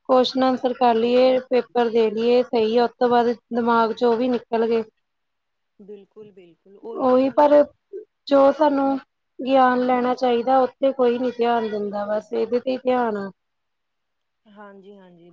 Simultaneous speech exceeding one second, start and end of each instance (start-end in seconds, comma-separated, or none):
none